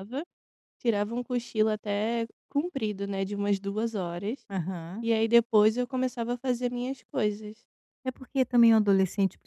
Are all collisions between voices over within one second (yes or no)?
yes